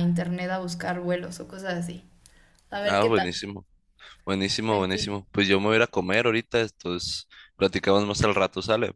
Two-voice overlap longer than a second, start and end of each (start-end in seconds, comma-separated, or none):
none